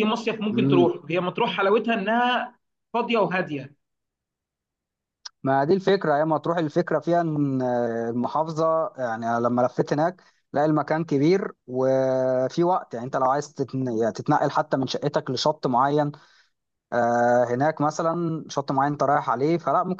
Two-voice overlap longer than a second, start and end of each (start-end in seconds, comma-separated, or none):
none